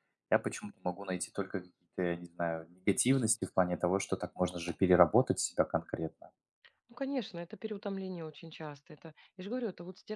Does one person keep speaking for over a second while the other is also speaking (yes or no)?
no